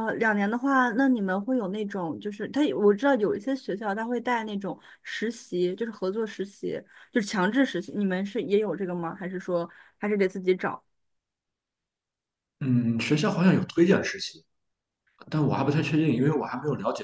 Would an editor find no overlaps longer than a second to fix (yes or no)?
yes